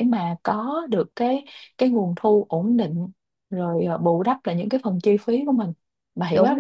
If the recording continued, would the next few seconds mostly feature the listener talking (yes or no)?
yes